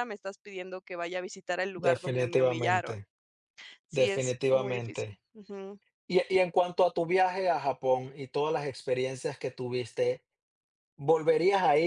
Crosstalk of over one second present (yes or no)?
yes